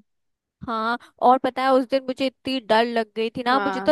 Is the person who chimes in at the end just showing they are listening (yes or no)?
yes